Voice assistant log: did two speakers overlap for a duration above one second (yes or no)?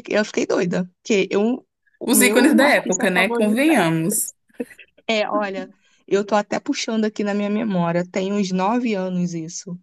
yes